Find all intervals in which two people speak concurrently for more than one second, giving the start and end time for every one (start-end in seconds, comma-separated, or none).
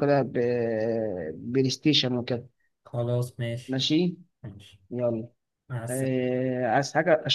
none